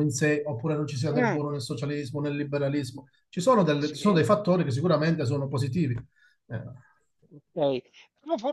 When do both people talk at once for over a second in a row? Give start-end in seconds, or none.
none